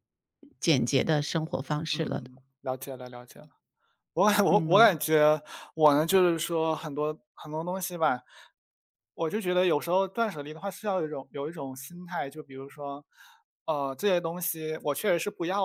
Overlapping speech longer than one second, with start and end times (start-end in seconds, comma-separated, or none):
none